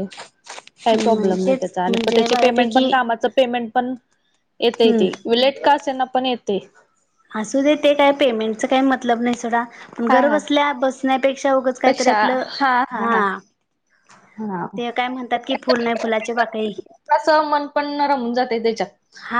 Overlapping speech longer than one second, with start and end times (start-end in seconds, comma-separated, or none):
0.8-2.8